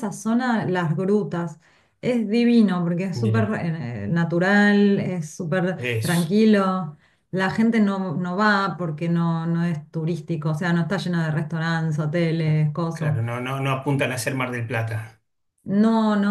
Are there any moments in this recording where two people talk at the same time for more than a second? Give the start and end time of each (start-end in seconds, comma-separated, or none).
none